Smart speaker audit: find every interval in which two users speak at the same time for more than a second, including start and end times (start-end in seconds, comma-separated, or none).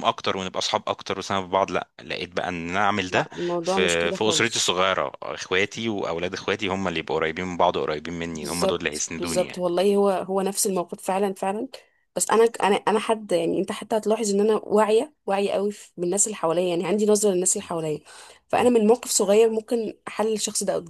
3.1-4.7, 8.3-9.6